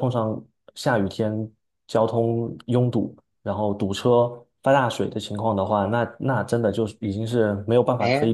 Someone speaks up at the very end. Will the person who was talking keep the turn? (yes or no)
no